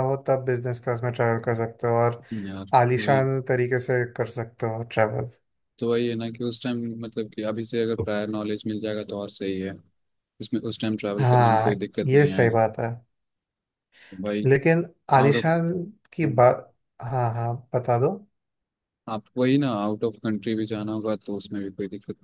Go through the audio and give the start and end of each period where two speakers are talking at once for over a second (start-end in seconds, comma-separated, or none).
11.2-12.6